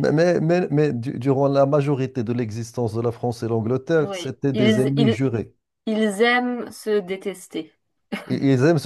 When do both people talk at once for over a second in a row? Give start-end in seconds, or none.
4.0-5.2